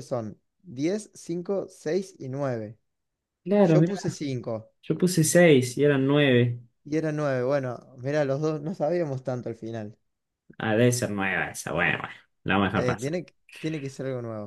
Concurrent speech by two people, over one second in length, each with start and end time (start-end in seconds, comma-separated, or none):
none